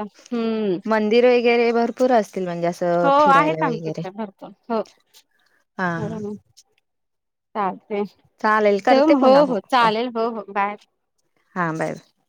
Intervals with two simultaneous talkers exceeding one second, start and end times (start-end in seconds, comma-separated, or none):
8.4-9.9